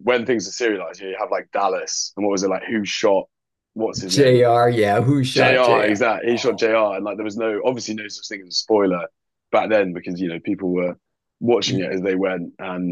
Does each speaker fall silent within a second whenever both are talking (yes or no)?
no